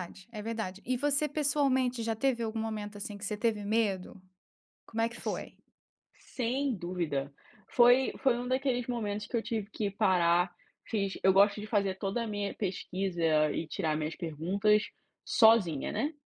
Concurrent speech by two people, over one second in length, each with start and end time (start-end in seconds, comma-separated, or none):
none